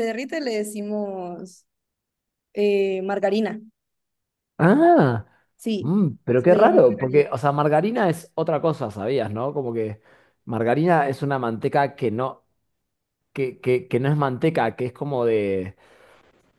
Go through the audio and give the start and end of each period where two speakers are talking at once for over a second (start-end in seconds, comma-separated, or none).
5.8-7.2